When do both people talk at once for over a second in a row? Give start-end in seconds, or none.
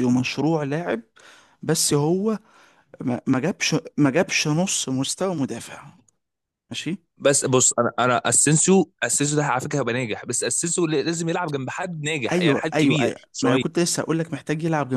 12.3-13.6